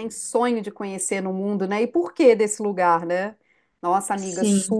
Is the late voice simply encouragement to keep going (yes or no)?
yes